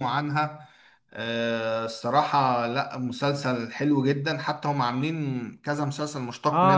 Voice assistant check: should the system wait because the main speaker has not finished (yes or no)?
no